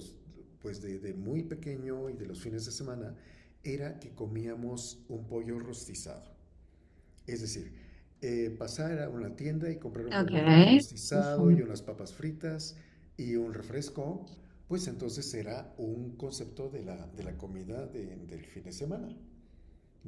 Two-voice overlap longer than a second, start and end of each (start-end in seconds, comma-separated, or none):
10.1-11.6